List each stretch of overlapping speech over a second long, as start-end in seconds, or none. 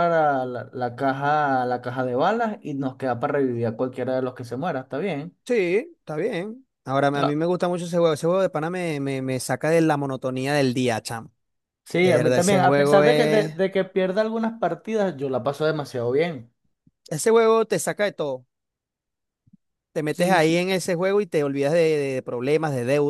12.0-13.5